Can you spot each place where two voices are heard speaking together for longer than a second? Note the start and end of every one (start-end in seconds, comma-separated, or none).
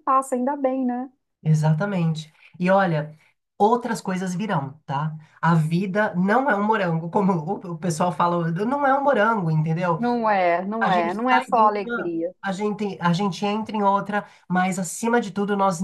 10.8-12.3